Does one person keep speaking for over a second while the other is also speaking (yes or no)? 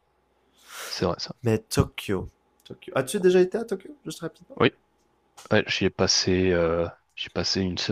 no